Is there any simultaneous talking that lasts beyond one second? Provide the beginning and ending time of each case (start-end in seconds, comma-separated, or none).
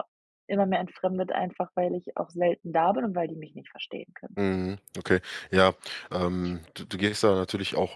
none